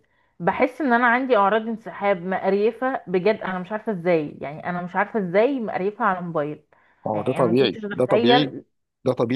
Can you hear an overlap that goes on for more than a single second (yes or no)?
yes